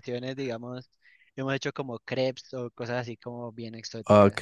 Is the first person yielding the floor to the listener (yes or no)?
yes